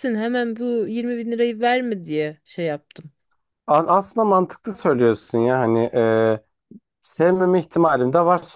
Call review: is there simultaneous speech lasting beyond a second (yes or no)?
no